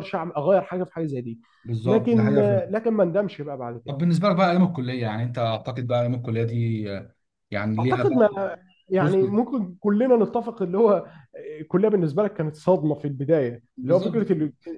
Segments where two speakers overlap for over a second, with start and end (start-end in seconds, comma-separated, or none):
none